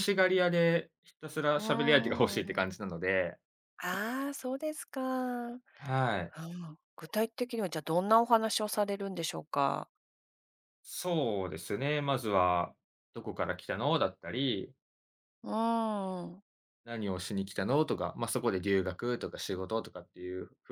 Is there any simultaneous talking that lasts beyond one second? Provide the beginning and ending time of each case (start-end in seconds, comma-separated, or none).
1.5-2.8